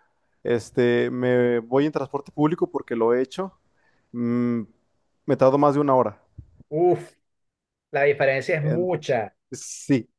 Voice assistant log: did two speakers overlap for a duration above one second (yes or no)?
no